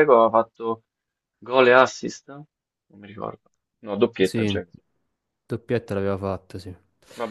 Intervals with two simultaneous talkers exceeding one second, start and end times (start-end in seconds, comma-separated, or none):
none